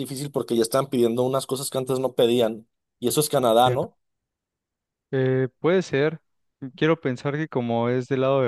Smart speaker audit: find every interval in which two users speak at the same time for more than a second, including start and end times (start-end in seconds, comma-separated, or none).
none